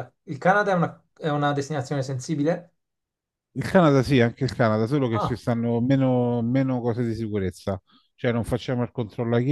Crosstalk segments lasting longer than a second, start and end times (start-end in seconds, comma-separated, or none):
none